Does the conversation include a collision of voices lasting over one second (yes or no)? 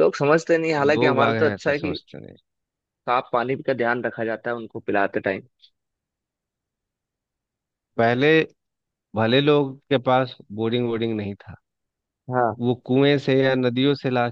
yes